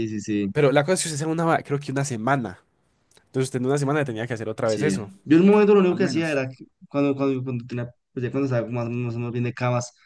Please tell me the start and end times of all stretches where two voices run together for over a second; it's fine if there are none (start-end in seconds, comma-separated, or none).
none